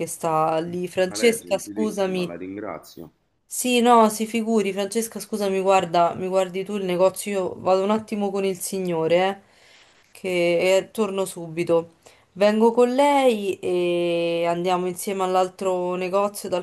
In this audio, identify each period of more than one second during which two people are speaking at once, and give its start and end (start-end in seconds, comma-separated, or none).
1.0-2.3